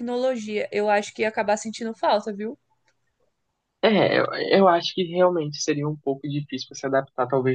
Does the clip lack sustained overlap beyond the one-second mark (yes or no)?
yes